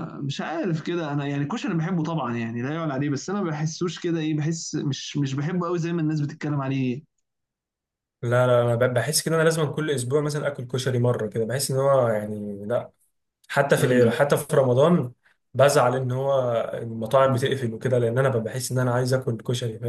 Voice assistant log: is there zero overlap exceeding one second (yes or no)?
yes